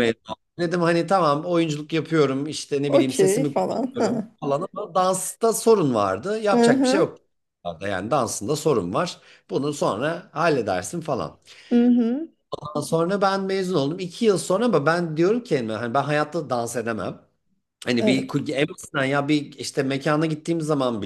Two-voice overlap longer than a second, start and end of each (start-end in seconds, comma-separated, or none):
2.9-4.3